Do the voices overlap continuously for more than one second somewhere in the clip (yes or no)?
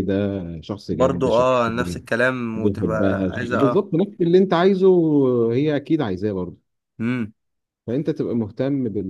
yes